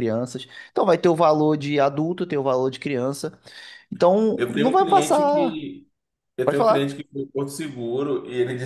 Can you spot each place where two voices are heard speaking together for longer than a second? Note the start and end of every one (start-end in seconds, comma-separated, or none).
4.3-5.6